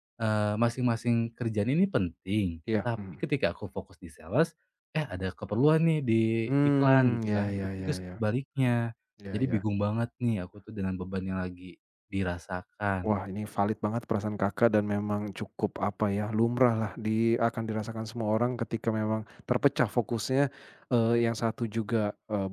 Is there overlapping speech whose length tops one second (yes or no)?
yes